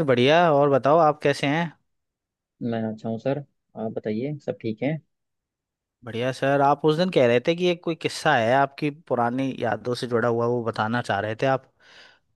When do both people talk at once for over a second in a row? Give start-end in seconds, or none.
none